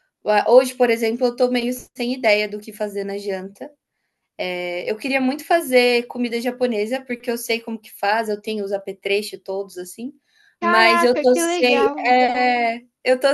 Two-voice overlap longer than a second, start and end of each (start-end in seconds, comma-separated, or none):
10.6-12.2